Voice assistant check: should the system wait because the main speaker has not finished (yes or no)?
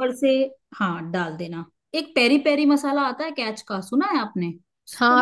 no